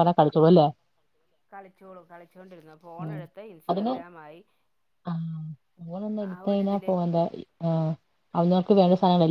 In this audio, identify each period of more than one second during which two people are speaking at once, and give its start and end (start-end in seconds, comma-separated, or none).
none